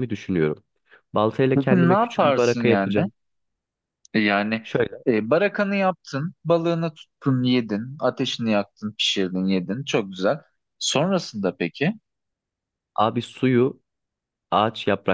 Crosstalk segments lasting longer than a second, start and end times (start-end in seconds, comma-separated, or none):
1.6-3.0